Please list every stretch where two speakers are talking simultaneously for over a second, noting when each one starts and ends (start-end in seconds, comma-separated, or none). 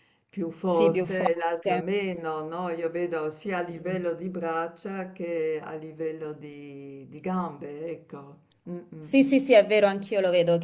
0.7-1.9